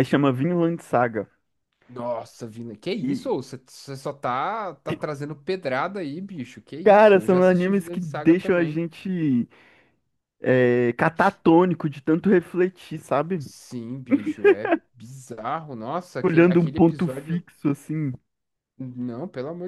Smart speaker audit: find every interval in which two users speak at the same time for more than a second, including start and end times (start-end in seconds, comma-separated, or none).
6.8-8.8, 16.2-17.4